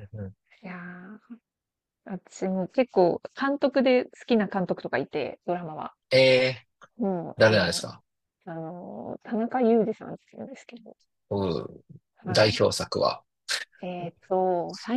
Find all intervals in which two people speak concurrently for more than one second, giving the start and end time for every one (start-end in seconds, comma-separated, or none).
none